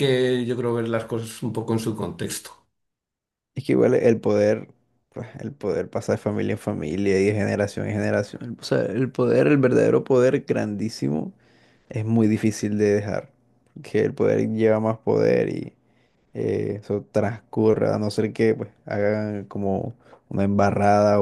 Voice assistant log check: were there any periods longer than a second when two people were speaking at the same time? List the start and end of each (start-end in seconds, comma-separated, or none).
none